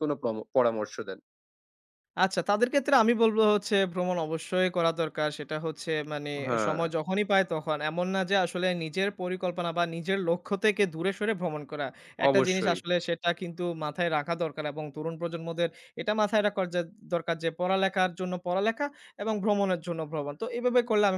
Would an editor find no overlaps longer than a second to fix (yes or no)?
yes